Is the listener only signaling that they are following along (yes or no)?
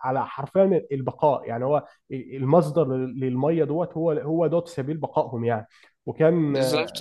yes